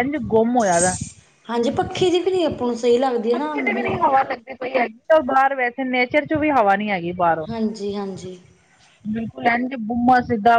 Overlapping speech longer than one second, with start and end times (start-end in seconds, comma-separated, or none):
none